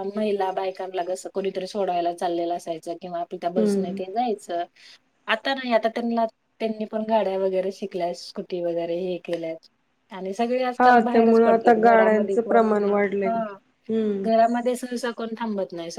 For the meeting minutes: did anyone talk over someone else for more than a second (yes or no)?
yes